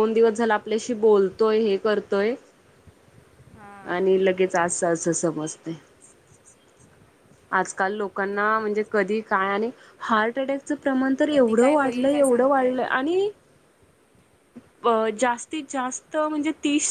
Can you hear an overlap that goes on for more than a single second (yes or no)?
yes